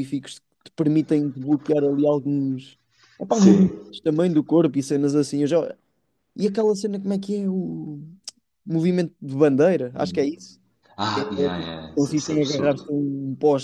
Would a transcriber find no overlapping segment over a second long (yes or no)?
no